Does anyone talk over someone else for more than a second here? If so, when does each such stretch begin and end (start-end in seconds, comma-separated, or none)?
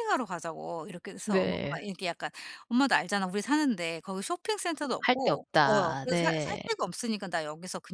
5.0-6.6